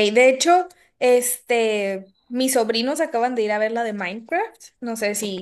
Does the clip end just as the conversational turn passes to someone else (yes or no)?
no